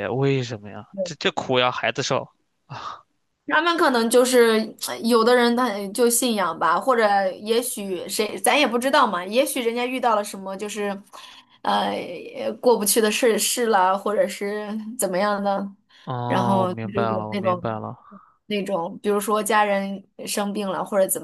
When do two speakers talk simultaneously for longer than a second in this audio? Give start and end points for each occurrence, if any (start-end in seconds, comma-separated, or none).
16.3-17.7